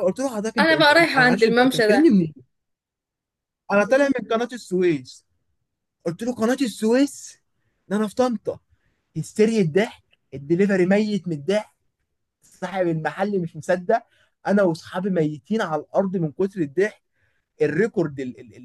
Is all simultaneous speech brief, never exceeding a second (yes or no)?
no